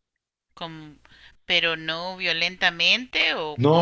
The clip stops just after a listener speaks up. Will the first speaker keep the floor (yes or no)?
no